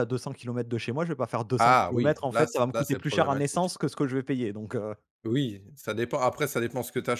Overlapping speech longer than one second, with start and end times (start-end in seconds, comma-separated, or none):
1.6-3.7